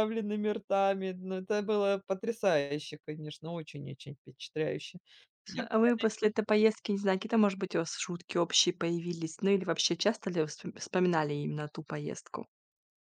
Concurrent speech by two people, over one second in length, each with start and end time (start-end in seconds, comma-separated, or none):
none